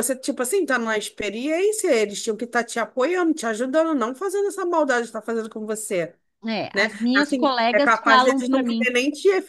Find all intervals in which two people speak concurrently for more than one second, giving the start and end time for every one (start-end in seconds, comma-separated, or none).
6.7-8.9